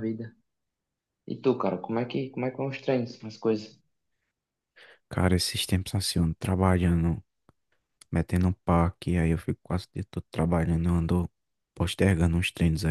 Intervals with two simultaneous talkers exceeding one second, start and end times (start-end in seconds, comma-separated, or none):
none